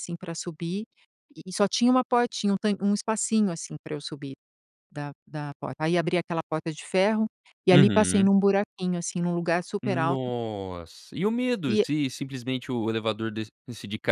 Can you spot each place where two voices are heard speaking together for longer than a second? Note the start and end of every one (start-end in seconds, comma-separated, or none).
none